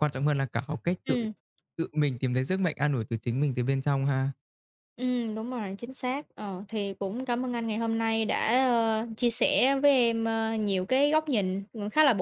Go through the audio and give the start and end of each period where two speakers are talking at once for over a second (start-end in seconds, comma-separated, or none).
none